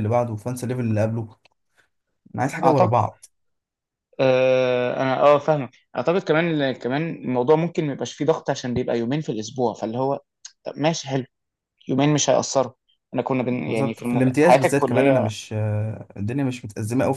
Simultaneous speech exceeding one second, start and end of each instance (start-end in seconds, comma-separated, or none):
13.7-15.3